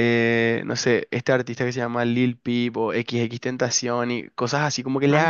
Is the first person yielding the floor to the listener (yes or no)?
no